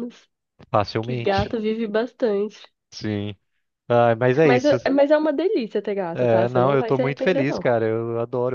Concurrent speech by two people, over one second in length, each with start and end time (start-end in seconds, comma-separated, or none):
6.1-7.7